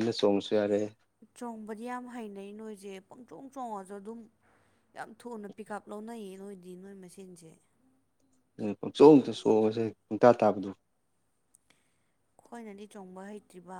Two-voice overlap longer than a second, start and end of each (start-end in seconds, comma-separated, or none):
none